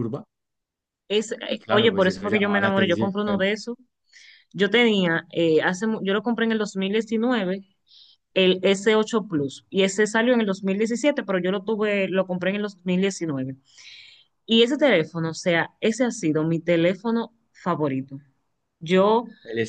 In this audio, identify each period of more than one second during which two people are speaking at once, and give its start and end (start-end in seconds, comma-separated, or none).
1.5-3.1